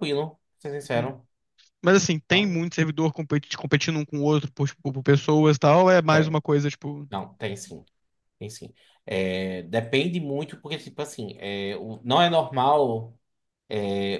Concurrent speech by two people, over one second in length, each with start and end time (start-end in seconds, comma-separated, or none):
none